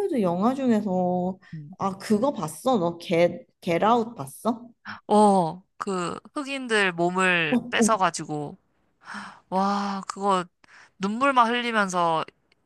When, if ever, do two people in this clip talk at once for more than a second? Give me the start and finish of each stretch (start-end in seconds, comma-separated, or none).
none